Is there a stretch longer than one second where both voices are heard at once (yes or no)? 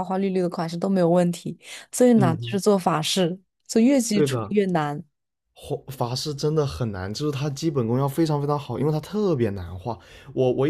no